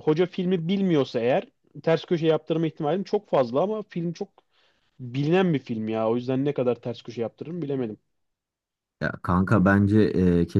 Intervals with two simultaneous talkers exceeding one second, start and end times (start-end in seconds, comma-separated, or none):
none